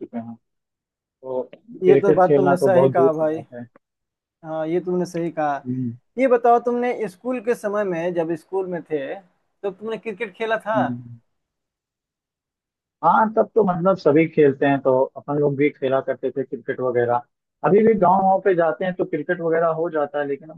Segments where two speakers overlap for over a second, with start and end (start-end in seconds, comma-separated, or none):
1.8-3.4